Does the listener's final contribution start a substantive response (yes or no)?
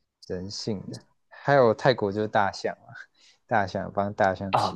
no